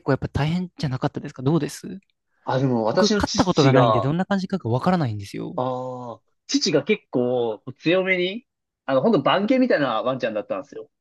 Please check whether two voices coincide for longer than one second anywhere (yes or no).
yes